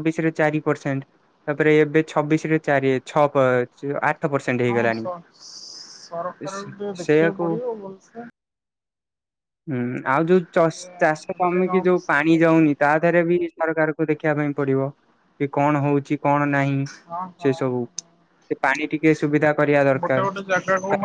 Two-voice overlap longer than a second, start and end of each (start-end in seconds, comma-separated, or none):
10.8-12.6